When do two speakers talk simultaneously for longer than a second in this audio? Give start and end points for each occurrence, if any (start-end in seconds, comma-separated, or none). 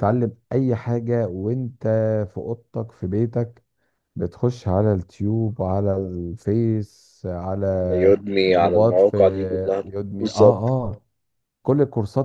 7.7-9.2